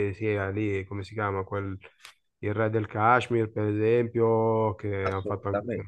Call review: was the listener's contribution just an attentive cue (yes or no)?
yes